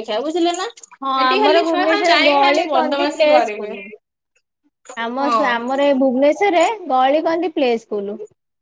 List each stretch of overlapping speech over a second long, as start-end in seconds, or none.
1.2-3.7